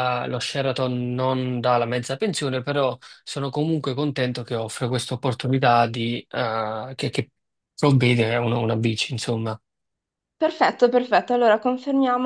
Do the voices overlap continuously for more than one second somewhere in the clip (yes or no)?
no